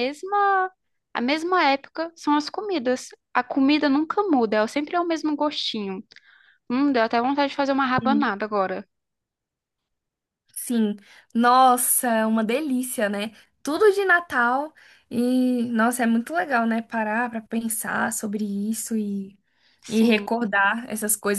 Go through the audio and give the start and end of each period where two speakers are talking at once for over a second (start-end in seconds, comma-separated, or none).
none